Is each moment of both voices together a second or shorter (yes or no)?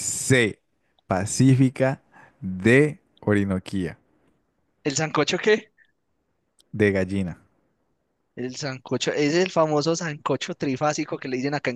yes